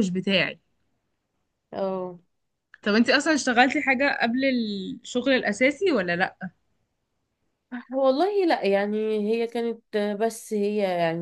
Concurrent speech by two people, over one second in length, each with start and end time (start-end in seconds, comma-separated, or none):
none